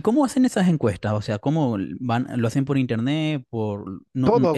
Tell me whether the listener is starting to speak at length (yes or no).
no